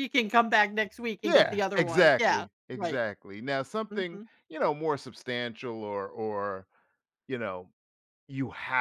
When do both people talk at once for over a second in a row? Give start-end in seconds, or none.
1.2-3.0